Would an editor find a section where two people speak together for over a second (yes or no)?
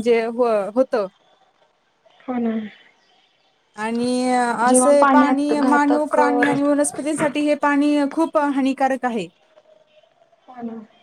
yes